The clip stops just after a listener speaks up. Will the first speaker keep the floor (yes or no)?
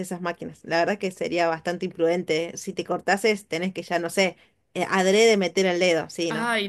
no